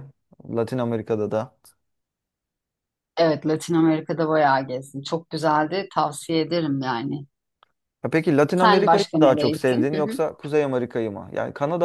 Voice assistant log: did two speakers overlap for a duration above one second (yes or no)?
yes